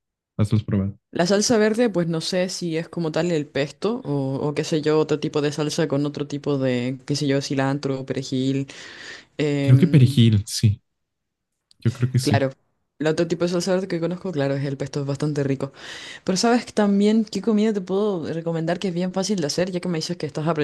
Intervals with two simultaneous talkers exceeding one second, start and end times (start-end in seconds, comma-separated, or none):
none